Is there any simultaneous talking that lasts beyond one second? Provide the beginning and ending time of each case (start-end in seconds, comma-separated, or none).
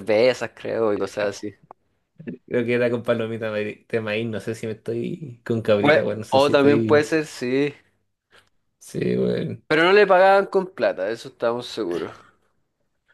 5.8-7.1